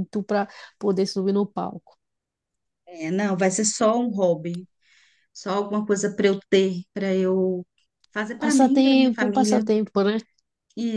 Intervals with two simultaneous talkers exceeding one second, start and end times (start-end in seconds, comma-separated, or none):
8.4-9.7